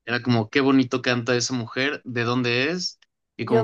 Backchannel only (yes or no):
no